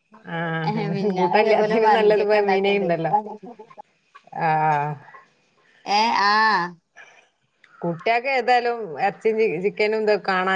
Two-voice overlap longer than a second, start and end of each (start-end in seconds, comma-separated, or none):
0.9-2.9